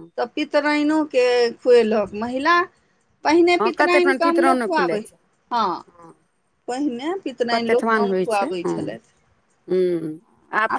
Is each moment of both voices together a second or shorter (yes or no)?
no